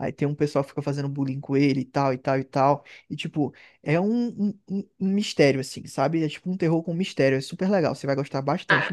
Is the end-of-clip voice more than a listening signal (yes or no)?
yes